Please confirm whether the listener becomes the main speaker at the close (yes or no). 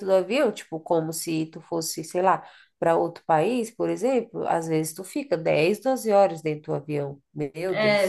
yes